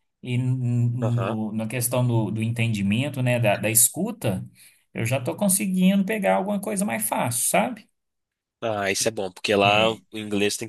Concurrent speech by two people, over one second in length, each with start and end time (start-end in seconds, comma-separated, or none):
none